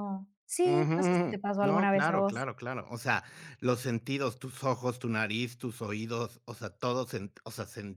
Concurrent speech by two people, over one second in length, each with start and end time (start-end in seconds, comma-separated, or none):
0.6-2.5